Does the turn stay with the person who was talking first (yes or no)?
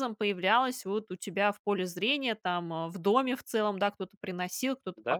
yes